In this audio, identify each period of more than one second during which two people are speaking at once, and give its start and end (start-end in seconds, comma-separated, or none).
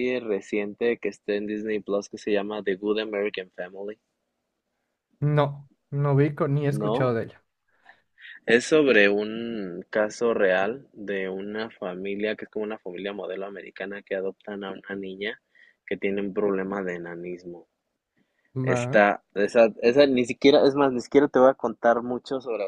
none